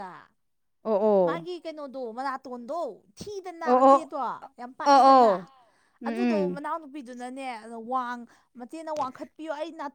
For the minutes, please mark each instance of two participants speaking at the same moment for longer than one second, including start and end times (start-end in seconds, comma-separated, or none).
none